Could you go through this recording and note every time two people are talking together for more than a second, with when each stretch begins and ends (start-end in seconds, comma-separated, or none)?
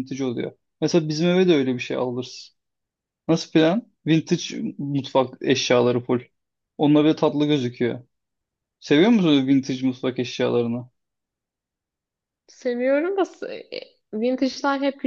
none